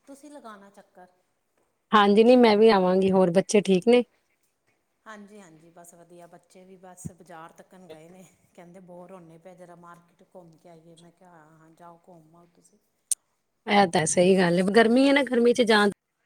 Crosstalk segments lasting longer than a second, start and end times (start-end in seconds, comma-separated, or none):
none